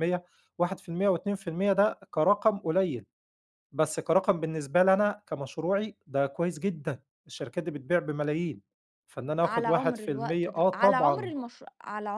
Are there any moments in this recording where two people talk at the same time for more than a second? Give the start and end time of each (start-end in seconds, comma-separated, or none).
9.4-11.3